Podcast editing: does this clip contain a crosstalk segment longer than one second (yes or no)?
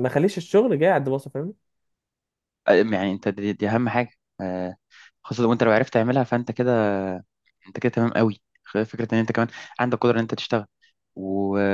no